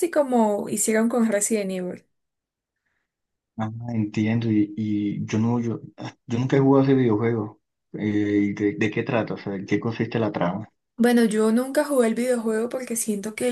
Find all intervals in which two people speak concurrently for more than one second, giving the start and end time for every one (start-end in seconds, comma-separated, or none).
none